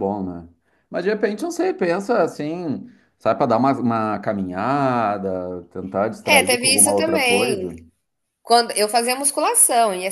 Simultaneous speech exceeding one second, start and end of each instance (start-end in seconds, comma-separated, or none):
6.2-7.7